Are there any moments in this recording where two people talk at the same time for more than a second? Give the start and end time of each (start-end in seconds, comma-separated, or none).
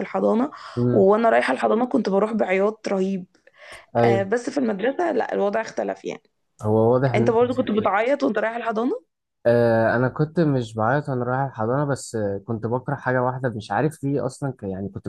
none